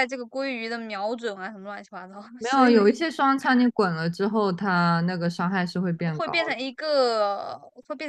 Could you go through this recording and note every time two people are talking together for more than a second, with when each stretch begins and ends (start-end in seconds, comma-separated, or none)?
none